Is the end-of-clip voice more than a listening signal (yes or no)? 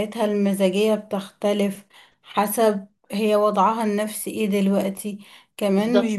no